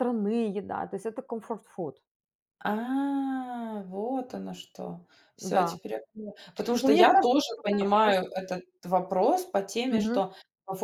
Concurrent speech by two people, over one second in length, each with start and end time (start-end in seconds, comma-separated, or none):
6.8-8.2